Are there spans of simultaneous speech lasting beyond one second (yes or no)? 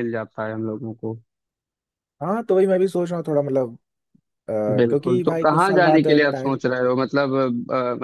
yes